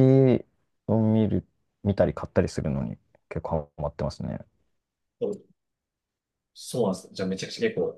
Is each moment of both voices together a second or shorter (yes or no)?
yes